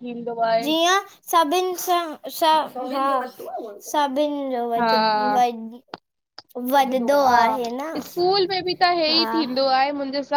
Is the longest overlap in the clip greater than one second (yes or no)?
no